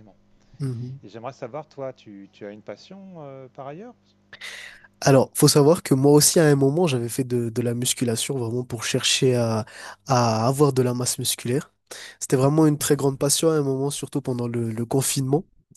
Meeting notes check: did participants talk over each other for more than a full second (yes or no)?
no